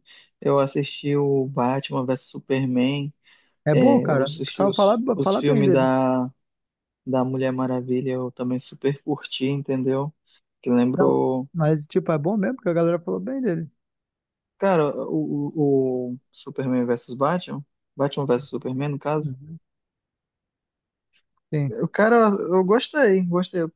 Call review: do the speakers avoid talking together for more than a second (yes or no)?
no